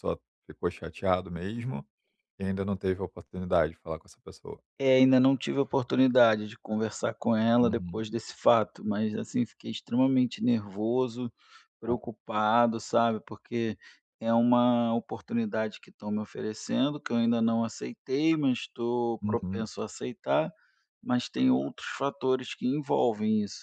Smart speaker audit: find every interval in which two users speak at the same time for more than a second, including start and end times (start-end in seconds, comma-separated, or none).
none